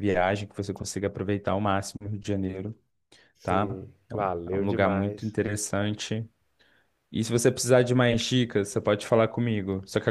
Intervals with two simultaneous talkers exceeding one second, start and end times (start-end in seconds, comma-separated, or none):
3.4-5.4